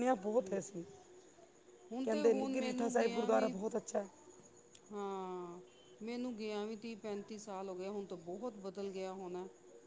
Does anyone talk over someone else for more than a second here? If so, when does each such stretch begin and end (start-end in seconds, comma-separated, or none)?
2.0-3.5